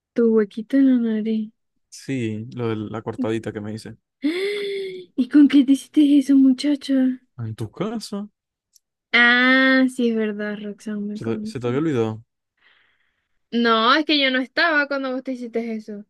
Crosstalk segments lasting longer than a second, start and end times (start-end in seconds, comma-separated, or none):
none